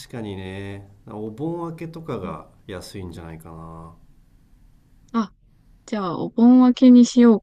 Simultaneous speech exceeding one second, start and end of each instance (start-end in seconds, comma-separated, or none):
none